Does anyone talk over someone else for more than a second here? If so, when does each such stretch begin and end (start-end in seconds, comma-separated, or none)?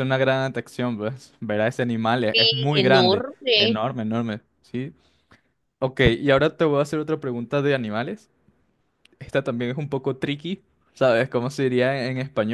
2.3-3.8